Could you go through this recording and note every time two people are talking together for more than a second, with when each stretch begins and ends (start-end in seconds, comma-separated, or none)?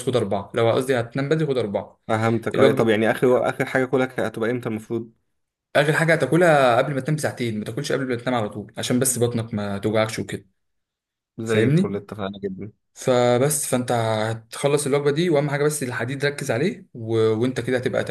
none